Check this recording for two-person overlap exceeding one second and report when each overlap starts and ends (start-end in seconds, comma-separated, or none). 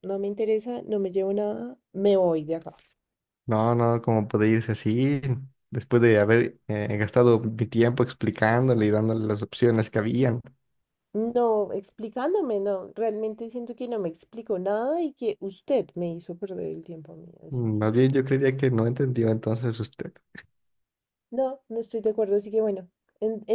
none